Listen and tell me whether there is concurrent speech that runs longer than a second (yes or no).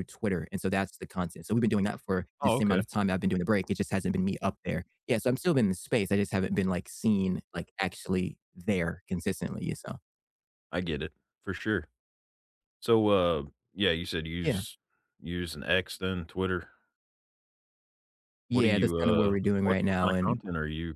yes